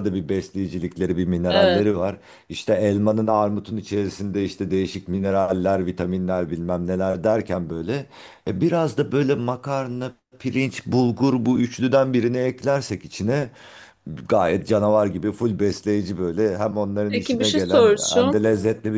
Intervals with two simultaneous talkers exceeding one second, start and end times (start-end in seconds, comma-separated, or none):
17.1-18.5